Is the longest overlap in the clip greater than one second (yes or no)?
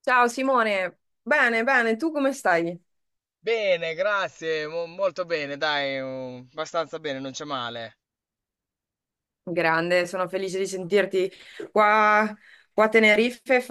no